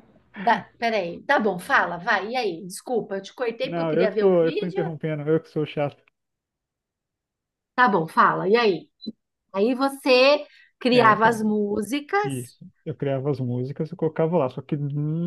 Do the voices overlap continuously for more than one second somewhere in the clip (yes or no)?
yes